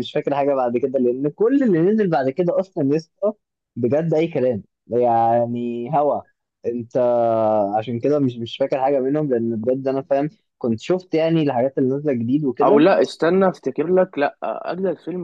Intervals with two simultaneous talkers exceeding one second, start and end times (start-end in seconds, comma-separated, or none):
none